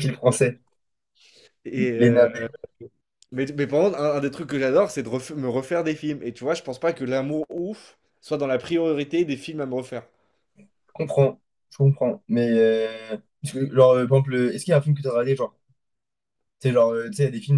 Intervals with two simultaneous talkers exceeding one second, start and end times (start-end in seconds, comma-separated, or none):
none